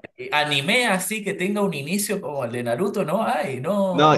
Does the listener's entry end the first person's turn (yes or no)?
yes